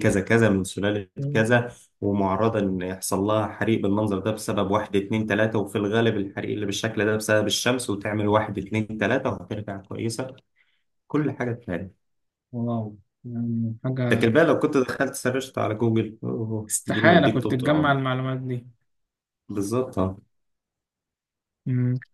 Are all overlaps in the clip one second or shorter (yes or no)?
no